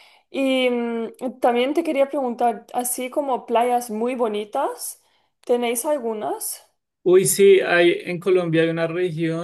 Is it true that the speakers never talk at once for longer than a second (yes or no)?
yes